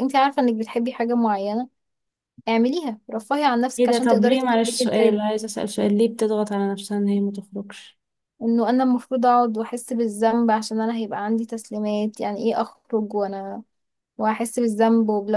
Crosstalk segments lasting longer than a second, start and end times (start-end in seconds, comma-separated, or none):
3.8-5.2